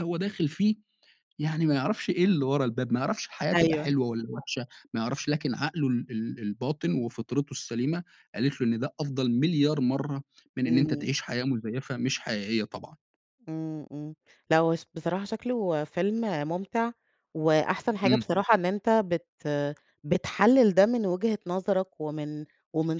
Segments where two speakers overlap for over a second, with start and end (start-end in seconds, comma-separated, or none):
none